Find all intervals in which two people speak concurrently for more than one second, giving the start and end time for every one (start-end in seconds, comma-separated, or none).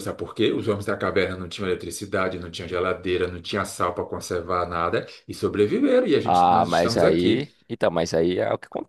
6.2-7.5